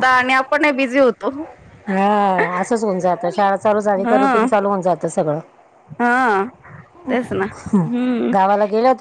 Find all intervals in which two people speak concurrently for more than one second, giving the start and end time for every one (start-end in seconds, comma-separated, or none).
none